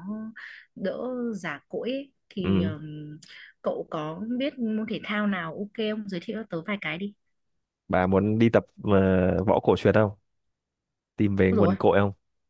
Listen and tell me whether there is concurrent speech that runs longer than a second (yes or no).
no